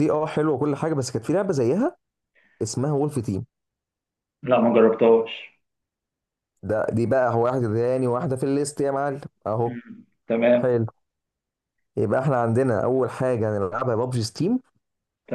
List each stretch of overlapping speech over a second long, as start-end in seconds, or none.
none